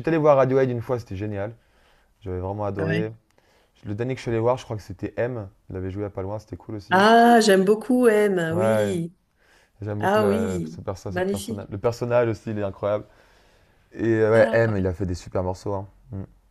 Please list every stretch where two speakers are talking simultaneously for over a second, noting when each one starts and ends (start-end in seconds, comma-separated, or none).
10.0-11.7